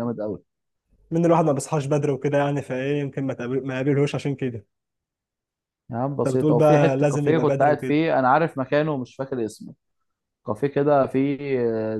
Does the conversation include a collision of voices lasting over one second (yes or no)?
yes